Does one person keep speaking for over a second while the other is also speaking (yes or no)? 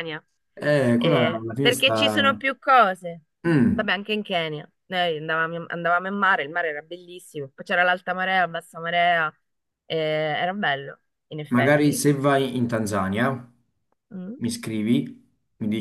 yes